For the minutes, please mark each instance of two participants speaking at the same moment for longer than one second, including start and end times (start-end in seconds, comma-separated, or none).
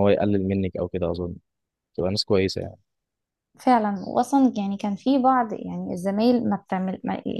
none